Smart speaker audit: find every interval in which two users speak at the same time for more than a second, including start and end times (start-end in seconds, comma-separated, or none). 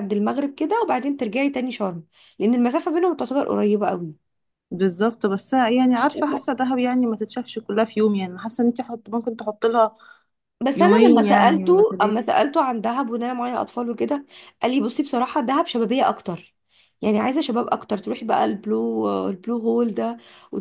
10.7-12.2